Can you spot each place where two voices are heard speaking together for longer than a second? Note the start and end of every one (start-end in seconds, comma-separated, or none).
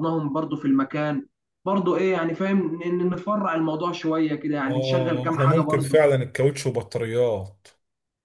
4.7-6.0